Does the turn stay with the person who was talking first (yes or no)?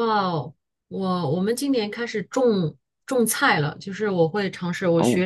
yes